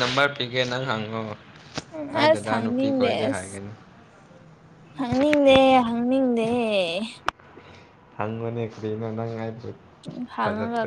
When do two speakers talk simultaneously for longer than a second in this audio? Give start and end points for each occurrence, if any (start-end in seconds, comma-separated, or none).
2.1-3.5